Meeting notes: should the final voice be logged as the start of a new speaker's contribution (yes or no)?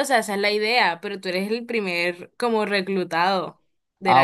yes